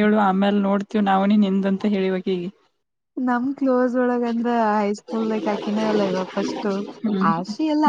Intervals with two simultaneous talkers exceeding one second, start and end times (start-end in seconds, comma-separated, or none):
none